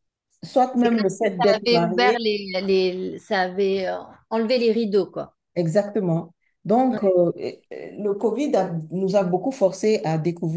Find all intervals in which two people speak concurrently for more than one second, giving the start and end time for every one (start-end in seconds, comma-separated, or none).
0.7-2.2